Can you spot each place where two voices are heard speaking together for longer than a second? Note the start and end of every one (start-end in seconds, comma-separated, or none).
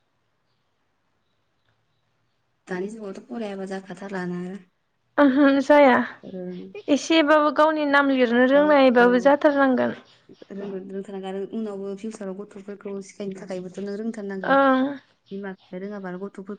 none